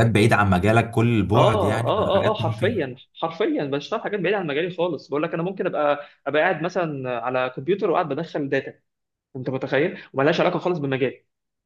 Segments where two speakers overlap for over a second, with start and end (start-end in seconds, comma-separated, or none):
1.4-2.7